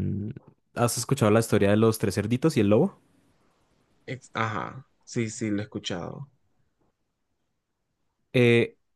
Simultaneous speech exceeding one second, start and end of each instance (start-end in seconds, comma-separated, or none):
none